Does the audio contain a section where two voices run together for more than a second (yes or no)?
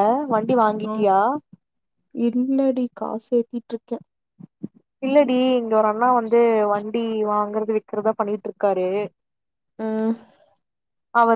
no